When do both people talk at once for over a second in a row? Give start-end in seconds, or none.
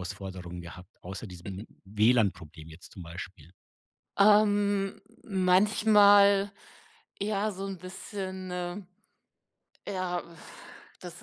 none